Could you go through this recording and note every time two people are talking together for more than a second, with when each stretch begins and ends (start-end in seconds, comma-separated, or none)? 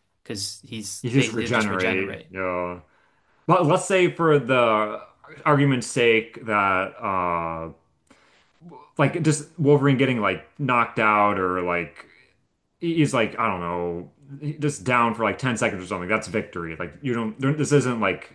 1.0-2.3